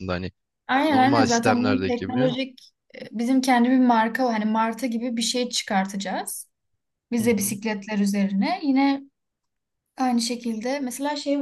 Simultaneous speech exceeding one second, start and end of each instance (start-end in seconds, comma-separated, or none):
0.9-2.3